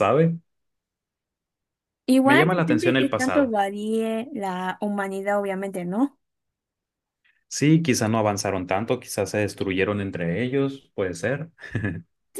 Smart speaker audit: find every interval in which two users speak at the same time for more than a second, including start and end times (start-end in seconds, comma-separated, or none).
2.2-3.5